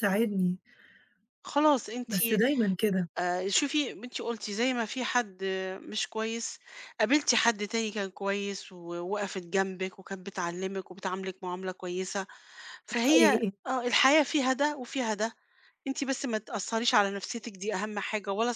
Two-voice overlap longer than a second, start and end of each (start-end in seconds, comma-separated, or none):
none